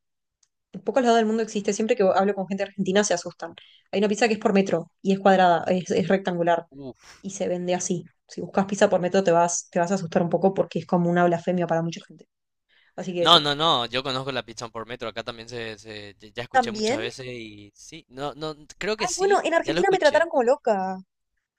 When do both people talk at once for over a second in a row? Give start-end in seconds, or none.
19.0-20.3